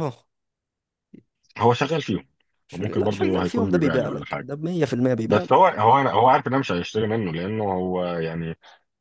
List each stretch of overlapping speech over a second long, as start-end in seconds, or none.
2.7-4.5